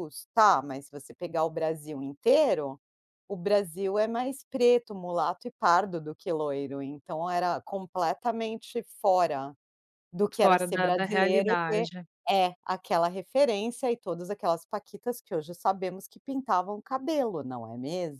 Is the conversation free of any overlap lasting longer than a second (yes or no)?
no